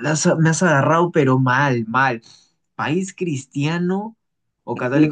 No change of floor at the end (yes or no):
no